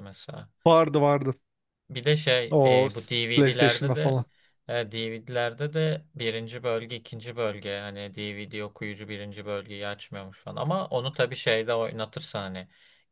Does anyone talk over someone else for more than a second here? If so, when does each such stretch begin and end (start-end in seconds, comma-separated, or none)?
2.5-4.2